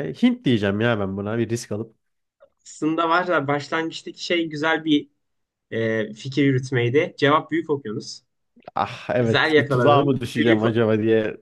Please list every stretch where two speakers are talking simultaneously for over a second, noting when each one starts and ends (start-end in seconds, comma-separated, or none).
9.2-10.8